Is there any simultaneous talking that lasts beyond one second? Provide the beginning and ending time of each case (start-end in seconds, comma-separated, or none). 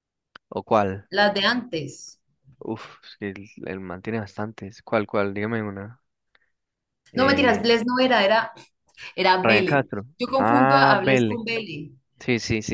9.4-11.4